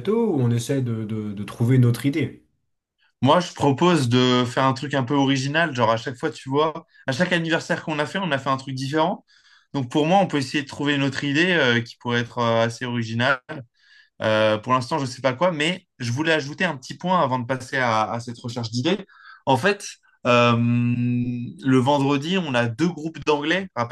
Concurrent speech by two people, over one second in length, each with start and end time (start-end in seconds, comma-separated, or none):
none